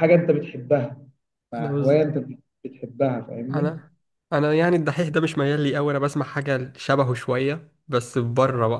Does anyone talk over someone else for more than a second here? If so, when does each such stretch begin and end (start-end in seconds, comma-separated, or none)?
none